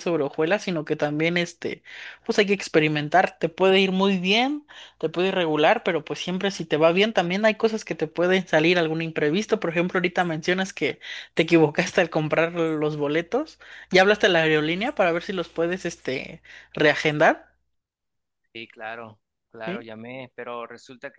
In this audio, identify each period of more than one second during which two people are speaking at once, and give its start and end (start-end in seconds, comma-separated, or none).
none